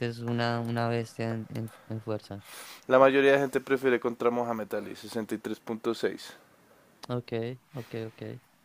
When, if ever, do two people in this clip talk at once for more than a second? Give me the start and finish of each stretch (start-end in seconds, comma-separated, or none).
none